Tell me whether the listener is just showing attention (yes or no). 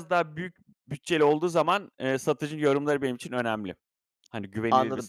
no